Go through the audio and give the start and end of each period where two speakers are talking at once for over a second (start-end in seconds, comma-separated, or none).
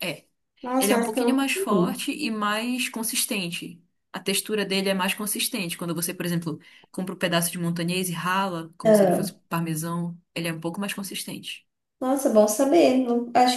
0.8-2.0